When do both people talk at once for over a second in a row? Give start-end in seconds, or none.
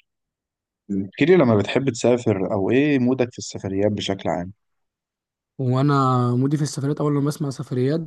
none